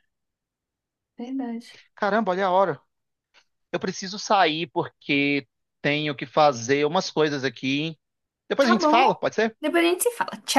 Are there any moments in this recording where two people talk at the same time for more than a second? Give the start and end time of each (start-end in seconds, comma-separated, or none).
none